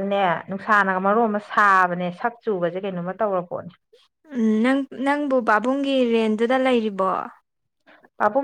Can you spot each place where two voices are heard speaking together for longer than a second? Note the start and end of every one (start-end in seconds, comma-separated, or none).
none